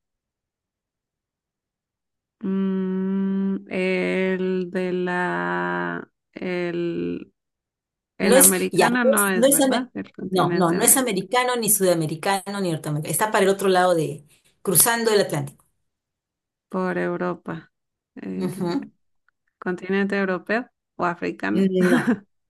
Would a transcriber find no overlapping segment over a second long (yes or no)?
no